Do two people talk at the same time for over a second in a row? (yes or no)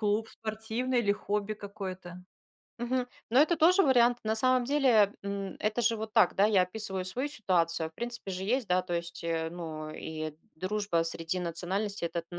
no